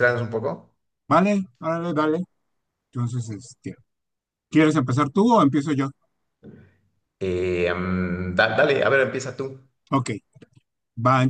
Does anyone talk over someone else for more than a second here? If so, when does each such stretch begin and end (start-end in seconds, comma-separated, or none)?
none